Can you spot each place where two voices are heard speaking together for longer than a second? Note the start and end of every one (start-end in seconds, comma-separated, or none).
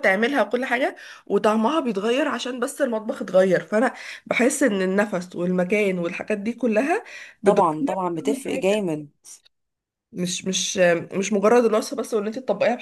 7.4-8.8